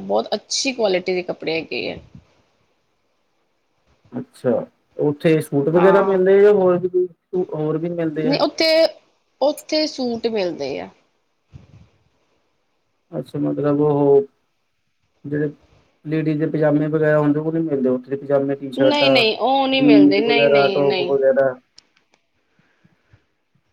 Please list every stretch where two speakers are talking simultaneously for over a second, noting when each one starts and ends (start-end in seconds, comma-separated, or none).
19.8-21.1